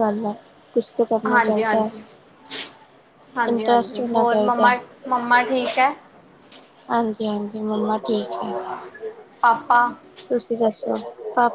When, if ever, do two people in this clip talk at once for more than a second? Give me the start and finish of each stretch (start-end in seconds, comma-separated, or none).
3.5-4.7